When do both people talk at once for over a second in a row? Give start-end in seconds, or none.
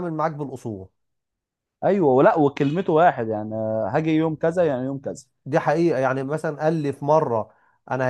none